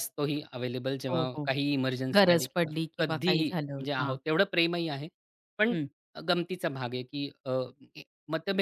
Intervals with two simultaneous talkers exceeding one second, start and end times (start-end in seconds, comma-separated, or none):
2.1-4.2